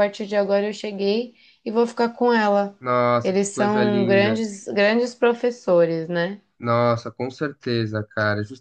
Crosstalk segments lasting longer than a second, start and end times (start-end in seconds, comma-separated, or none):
3.2-4.4